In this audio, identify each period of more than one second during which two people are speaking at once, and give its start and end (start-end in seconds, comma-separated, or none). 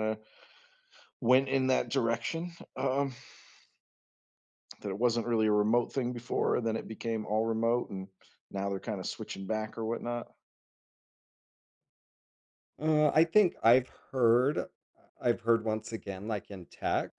none